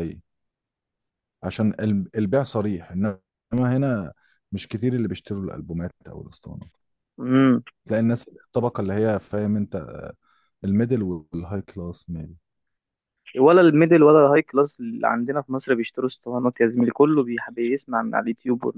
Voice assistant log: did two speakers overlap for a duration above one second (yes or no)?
no